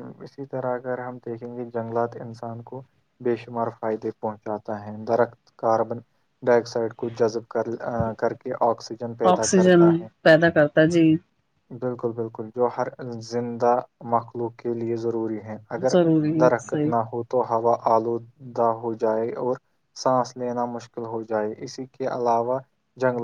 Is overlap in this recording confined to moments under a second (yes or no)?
yes